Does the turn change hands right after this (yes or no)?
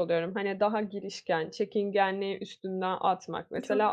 no